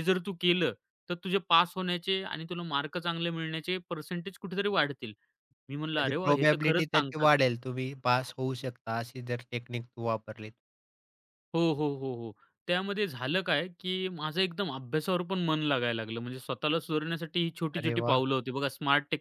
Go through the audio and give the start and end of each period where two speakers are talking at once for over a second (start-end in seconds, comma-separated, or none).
6.0-7.5